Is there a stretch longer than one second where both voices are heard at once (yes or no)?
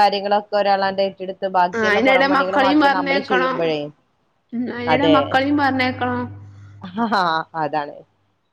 yes